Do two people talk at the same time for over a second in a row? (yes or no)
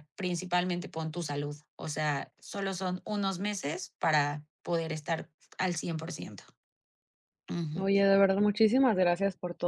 no